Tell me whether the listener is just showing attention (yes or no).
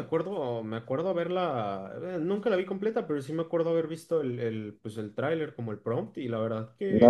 no